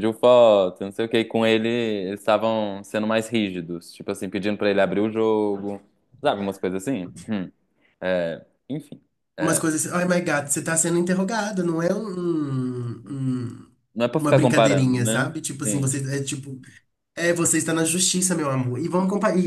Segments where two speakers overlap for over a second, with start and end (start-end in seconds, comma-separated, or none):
14.2-15.9